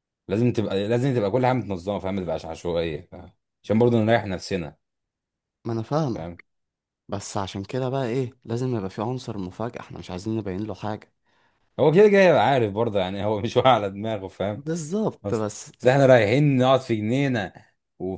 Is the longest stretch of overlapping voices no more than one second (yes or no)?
yes